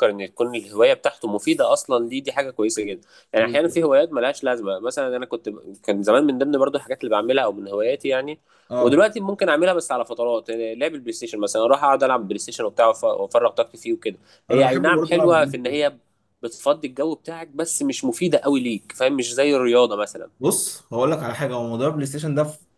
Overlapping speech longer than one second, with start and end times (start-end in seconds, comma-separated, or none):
14.5-15.9